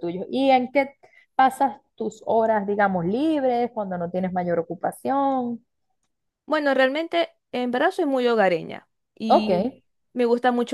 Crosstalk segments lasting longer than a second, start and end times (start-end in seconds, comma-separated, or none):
none